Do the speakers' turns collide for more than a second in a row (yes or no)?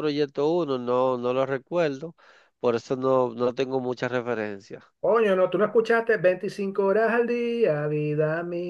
no